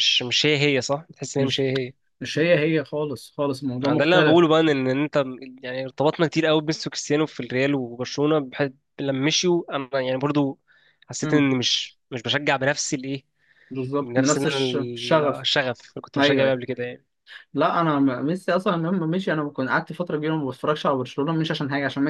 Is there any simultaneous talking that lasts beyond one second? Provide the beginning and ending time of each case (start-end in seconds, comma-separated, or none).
14.0-15.5